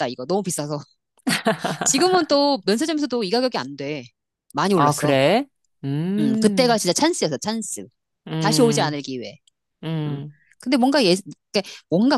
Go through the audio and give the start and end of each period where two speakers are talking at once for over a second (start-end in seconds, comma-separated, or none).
none